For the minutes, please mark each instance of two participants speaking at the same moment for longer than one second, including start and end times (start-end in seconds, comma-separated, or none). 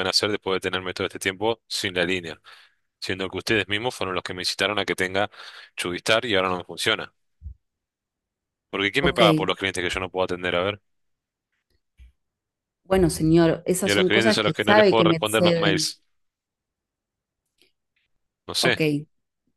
13.8-15.9